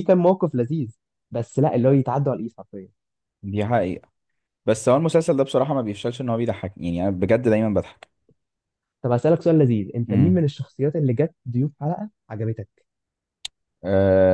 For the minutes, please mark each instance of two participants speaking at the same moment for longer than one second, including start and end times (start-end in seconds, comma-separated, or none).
none